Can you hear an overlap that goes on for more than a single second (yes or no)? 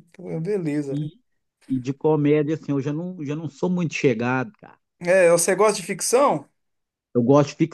no